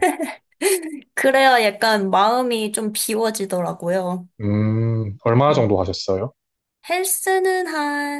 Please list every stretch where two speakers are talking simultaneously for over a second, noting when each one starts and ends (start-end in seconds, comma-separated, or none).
none